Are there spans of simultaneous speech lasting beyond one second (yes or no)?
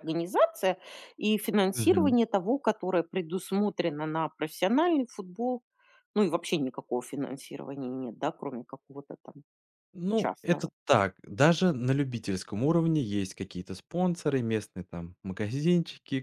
no